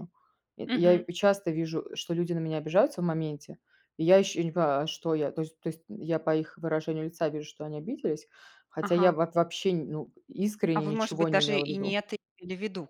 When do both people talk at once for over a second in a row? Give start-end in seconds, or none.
10.8-12.0